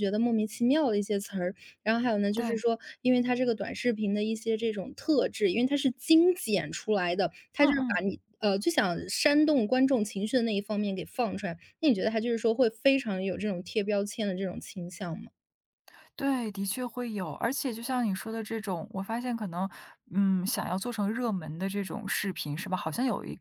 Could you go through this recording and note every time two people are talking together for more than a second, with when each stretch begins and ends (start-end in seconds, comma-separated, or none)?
none